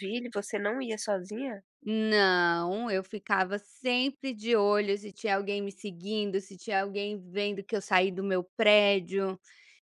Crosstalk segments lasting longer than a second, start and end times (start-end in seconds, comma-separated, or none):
none